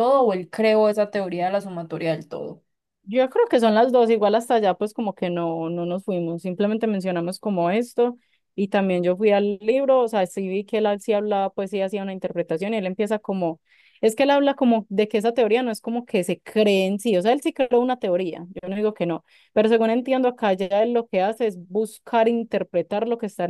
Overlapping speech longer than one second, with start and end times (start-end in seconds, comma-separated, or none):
none